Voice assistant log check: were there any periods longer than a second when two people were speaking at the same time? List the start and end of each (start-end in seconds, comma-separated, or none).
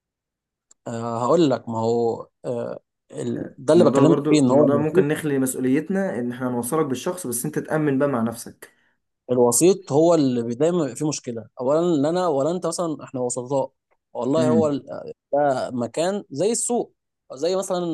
3.8-5.1